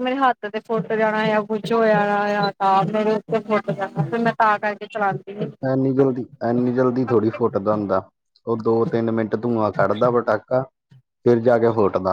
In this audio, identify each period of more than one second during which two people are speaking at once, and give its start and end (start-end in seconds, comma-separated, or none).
none